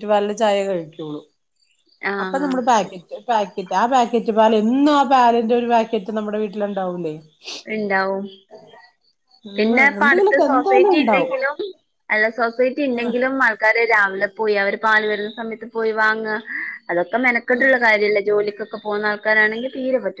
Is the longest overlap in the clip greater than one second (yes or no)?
yes